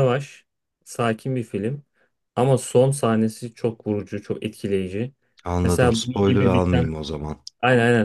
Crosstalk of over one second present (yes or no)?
yes